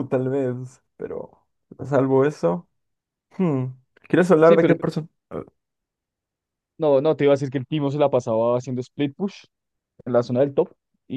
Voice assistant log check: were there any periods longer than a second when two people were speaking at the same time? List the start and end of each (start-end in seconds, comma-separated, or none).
none